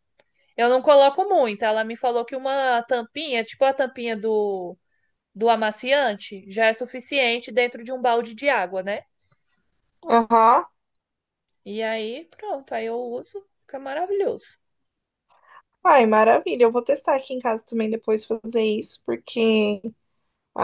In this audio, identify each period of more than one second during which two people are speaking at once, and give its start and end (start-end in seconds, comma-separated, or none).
none